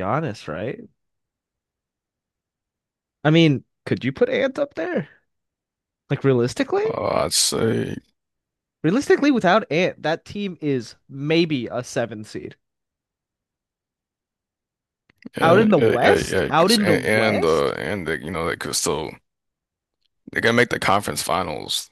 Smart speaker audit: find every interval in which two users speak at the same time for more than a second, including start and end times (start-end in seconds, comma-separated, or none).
15.4-17.7